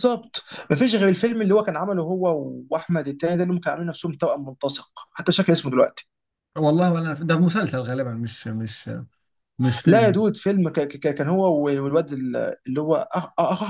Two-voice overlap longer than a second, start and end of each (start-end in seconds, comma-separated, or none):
none